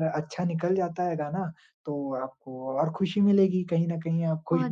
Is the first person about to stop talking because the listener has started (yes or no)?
no